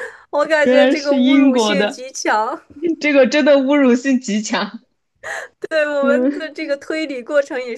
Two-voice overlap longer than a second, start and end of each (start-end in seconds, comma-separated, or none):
0.6-2.0